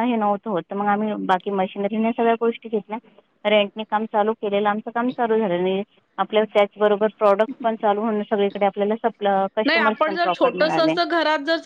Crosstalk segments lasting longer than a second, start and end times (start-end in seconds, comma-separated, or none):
none